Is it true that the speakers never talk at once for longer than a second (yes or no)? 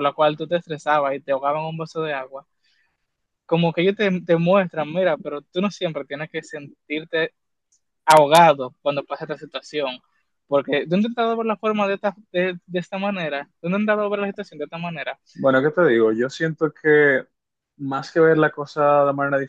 yes